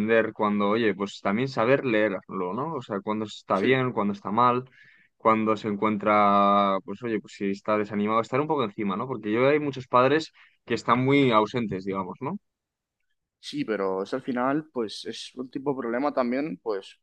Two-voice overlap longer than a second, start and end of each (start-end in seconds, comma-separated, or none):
none